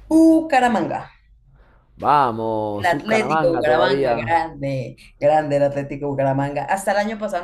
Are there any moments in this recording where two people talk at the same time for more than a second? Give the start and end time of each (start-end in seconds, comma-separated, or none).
2.8-4.3